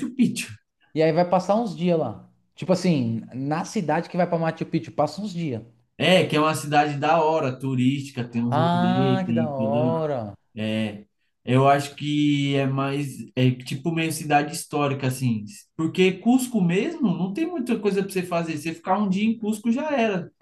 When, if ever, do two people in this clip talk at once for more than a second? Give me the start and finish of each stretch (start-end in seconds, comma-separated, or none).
8.5-9.9